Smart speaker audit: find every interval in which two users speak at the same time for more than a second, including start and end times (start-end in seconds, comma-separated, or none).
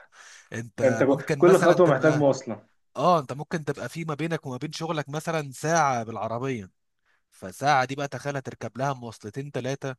0.8-2.3